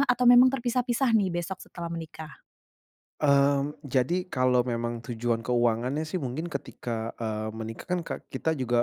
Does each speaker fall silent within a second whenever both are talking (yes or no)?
yes